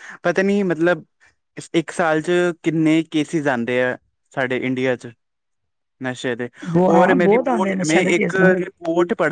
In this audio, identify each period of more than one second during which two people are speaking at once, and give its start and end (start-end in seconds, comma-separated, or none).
6.9-8.5